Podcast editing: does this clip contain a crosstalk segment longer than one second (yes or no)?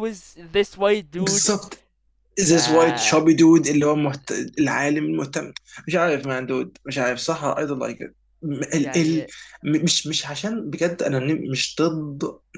no